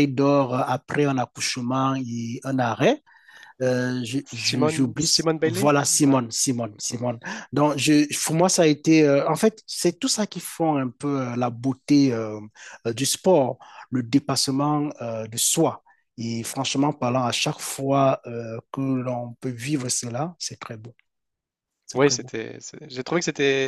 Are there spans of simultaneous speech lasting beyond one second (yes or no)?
yes